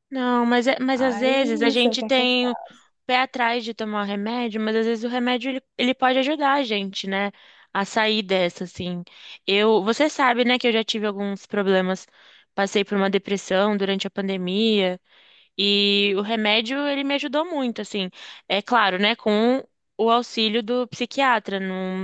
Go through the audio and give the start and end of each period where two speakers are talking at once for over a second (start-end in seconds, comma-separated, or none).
0.9-2.6